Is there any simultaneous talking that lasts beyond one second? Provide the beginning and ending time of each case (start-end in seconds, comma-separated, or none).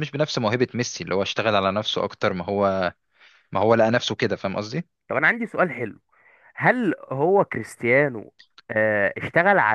none